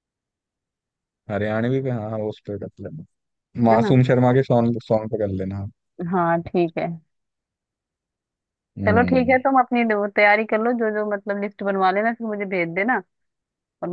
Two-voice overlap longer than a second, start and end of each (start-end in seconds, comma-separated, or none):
none